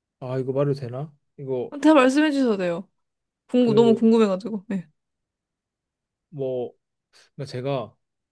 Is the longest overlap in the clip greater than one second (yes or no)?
no